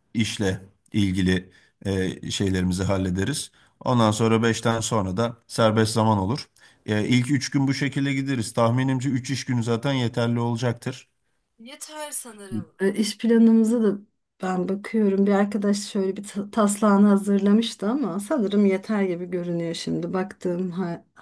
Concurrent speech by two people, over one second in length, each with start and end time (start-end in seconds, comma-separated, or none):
none